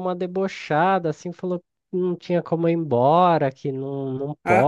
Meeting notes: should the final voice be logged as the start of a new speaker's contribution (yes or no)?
no